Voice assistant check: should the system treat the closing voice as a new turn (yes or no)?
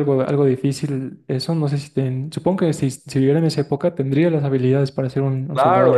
yes